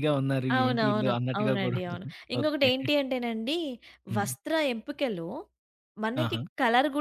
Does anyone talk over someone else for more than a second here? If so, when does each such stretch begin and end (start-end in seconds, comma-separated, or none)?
0.6-2.7